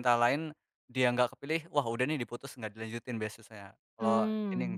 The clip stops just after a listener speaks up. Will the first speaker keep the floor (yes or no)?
no